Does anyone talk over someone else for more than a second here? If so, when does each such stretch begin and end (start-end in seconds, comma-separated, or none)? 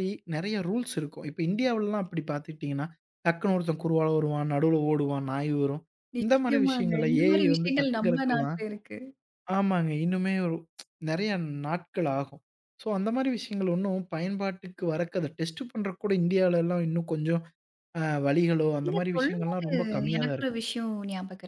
6.2-8.6